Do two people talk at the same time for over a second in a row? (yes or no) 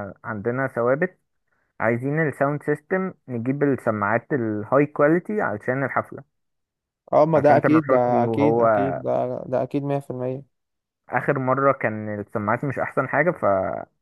yes